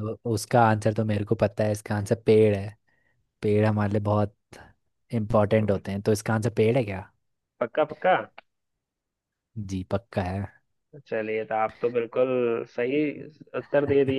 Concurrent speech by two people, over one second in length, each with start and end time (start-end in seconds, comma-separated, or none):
none